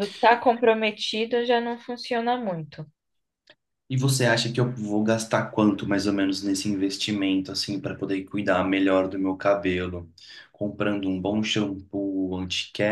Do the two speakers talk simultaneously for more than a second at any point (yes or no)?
no